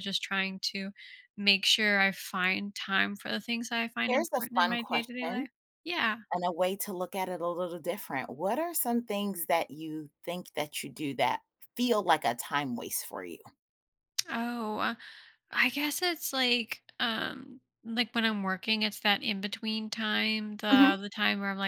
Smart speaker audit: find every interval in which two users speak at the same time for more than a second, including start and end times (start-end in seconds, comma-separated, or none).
4.1-5.5